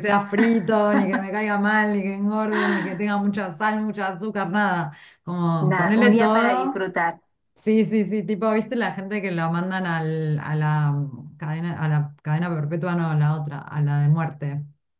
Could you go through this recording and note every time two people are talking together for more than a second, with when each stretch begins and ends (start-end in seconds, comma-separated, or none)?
5.6-6.8